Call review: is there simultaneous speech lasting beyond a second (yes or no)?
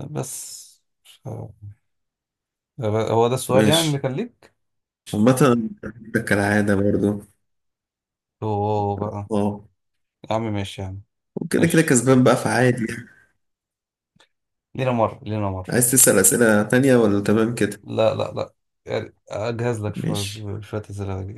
no